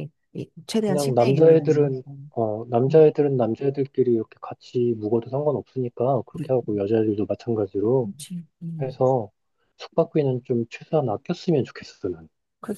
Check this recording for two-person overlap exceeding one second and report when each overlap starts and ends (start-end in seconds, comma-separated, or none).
0.8-2.2